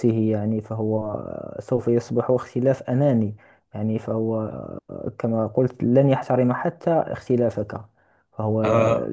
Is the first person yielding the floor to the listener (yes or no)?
no